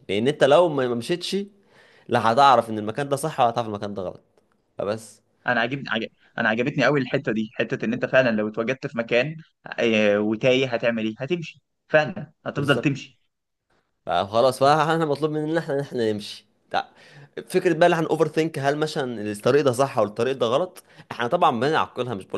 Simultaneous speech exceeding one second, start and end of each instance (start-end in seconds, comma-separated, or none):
none